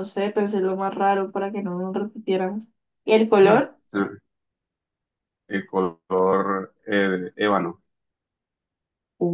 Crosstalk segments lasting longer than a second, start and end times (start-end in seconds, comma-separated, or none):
none